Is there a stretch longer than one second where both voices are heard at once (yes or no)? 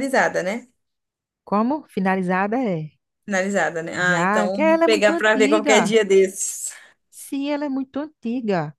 yes